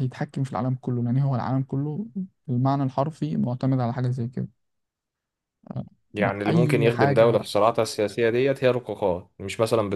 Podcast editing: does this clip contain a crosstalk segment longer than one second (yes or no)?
yes